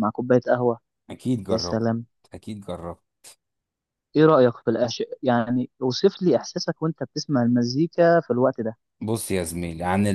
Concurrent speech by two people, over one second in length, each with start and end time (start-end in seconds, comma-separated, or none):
none